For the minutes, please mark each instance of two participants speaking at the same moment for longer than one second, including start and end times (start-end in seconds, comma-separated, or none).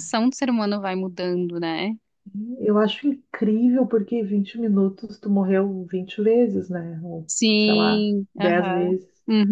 7.3-8.9